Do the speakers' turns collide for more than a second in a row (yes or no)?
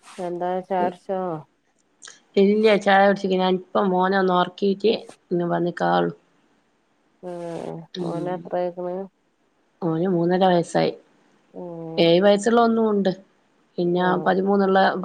no